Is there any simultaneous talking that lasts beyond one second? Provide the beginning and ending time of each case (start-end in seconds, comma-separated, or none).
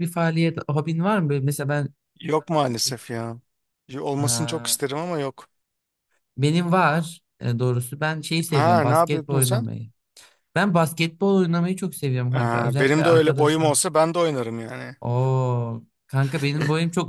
8.5-9.7, 12.3-13.7